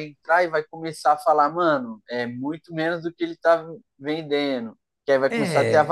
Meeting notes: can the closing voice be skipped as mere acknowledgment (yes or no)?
yes